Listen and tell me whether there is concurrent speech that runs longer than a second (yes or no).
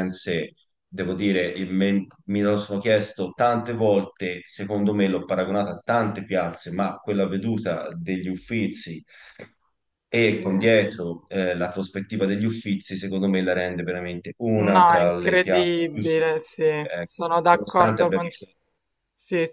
yes